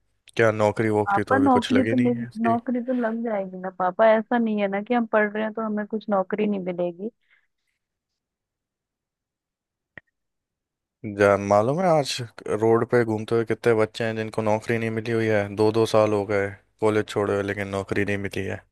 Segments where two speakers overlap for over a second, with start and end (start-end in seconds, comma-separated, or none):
1.1-2.6